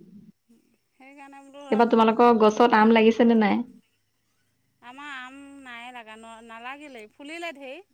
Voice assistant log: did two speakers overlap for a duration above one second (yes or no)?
no